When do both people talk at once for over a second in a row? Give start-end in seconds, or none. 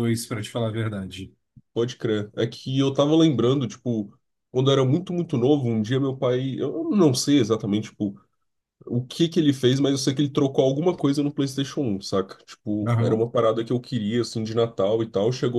none